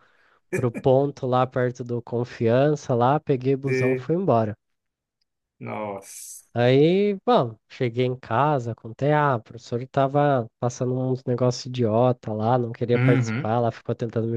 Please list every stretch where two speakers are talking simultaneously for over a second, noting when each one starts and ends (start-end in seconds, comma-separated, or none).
none